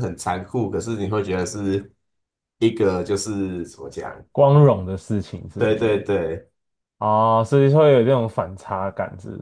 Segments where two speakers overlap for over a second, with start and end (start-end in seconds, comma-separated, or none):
none